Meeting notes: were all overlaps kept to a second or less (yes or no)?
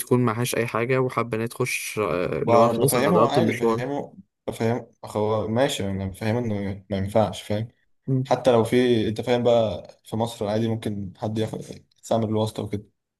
no